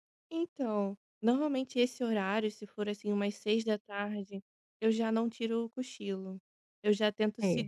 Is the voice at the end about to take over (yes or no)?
no